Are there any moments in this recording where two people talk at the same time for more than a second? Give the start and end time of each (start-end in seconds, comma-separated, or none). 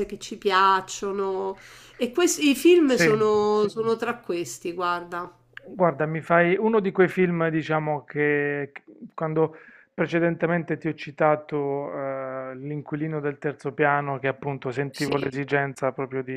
none